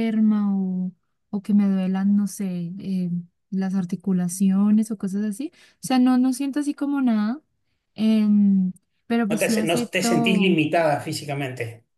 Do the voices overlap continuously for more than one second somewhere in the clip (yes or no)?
yes